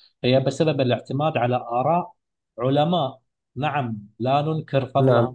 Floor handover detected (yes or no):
no